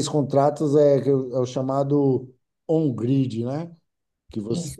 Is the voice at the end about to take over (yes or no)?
no